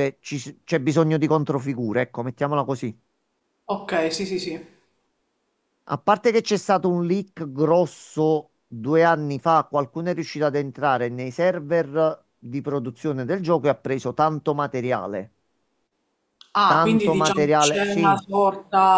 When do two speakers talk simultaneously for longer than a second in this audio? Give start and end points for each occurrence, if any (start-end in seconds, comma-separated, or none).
16.6-18.2